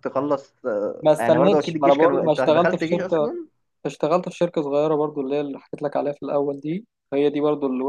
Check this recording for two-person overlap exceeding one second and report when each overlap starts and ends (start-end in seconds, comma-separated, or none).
1.0-3.3